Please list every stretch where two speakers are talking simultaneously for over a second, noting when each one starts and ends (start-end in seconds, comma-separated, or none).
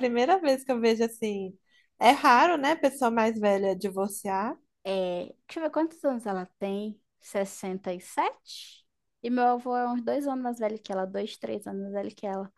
none